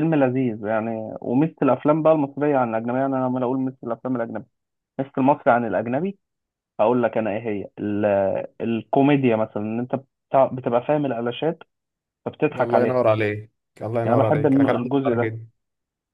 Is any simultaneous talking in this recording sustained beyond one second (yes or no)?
yes